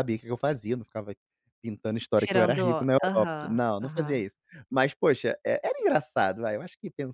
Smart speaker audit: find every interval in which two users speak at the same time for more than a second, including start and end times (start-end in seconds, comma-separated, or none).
2.2-4.2